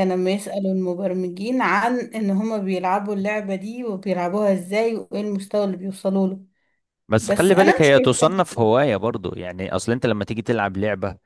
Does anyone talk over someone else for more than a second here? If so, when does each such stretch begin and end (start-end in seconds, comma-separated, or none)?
7.2-8.7